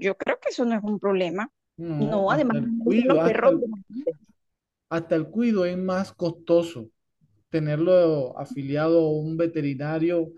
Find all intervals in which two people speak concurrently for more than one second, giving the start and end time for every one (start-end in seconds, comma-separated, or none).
2.0-3.6